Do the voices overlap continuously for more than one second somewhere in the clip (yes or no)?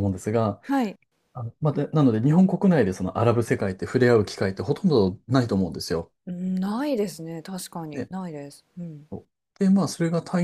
no